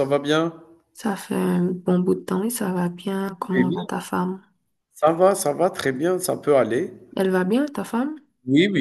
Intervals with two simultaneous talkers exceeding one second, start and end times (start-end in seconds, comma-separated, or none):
none